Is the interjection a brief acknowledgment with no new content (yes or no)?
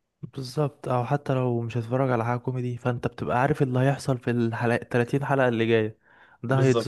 yes